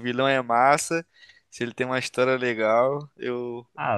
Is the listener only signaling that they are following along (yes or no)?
no